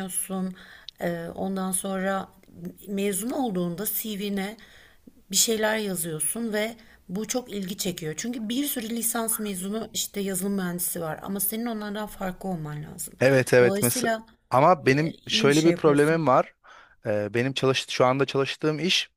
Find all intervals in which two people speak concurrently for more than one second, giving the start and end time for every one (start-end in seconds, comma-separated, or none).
14.8-16.2